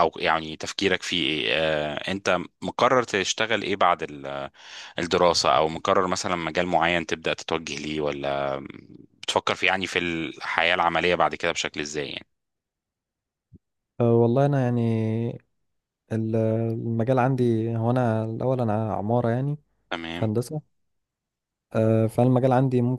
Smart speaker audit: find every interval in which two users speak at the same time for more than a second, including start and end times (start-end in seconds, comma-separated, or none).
none